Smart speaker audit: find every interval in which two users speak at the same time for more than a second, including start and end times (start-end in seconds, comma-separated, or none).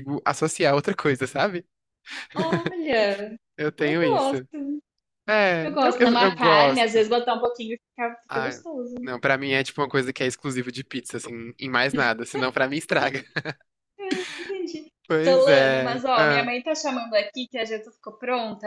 5.6-7.0, 15.1-16.5